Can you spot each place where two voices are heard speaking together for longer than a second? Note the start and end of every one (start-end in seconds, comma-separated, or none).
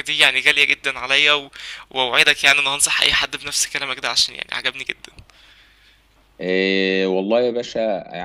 none